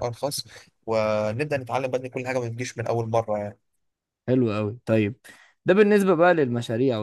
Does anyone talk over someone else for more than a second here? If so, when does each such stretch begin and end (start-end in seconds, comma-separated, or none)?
none